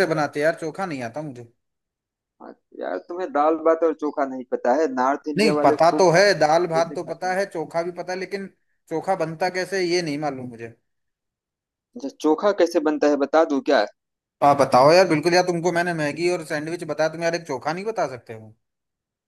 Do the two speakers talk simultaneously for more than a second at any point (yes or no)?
yes